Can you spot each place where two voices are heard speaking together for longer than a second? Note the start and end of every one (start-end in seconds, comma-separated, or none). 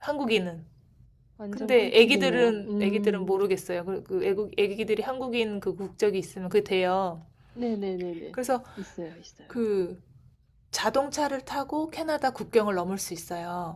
1.5-3.3